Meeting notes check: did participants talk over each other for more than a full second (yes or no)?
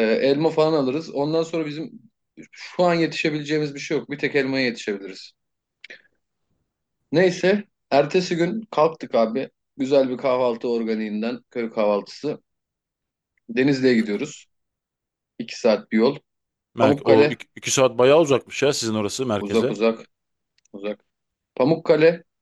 no